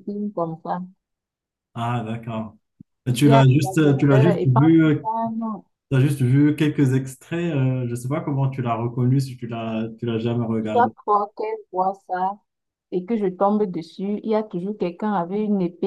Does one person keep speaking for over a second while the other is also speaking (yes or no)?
yes